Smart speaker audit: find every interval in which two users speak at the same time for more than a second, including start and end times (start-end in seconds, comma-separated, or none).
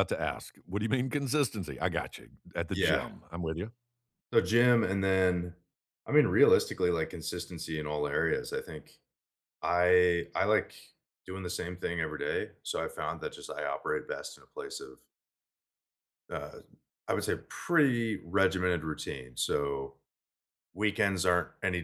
none